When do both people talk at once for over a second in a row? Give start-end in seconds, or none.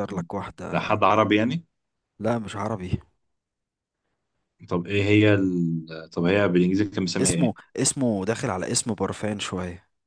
none